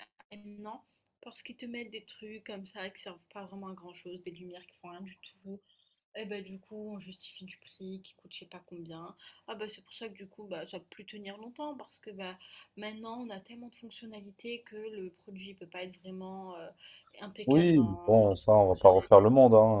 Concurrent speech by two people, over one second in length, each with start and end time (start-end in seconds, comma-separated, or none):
17.4-19.3